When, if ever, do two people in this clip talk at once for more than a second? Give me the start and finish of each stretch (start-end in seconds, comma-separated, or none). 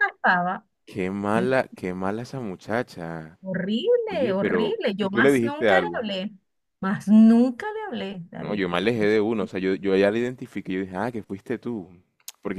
4.1-6.1